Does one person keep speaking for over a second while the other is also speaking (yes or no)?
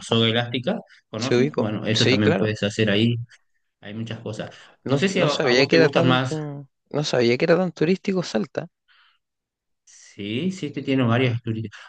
yes